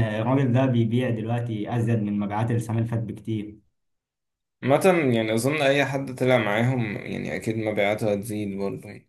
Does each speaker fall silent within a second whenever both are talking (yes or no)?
yes